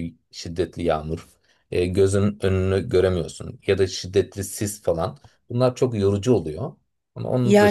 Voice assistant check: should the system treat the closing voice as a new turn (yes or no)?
yes